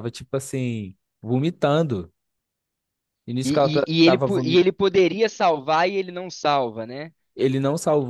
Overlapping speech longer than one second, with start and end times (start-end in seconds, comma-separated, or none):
3.4-4.7